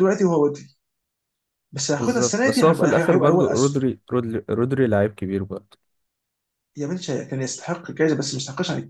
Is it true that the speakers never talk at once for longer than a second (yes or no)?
no